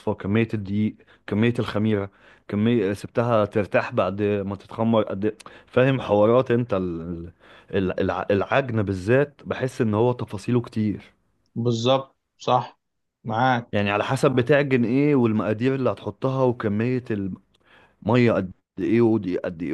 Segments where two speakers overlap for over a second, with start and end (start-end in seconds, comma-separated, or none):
none